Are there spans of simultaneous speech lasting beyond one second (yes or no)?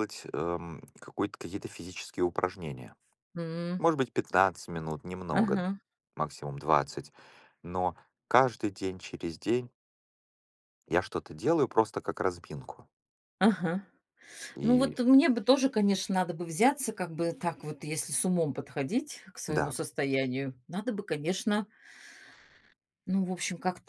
no